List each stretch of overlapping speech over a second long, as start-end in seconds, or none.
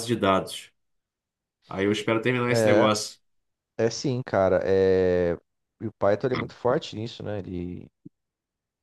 none